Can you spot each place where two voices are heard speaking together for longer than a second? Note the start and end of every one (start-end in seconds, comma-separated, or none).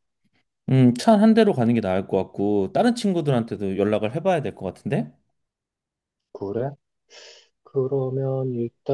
none